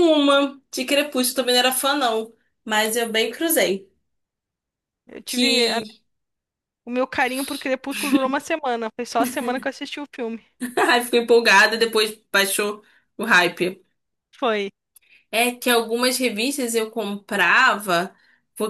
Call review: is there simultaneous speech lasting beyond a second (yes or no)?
no